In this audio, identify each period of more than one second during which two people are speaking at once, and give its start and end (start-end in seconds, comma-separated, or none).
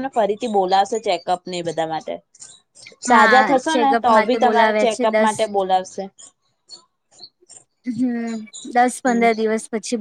3.1-5.3